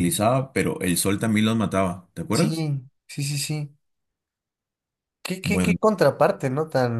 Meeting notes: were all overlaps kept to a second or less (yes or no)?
yes